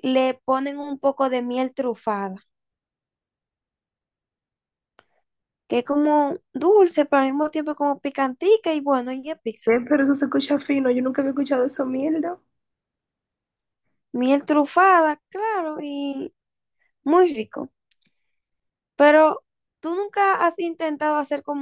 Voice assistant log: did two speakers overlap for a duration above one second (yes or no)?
no